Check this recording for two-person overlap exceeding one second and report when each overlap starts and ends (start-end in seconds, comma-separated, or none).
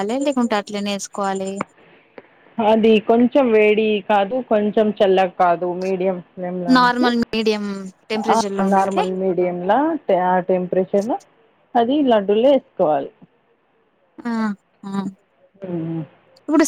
none